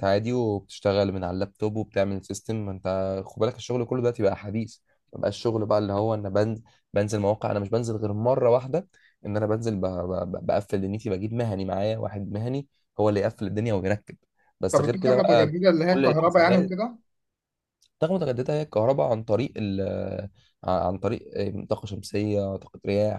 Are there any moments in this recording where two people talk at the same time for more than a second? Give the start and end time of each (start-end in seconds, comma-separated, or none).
14.7-16.7